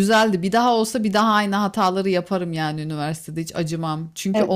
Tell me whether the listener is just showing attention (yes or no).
yes